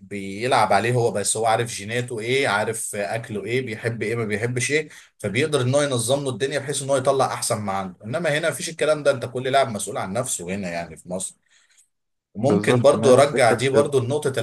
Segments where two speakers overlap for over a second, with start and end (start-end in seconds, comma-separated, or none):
12.4-13.9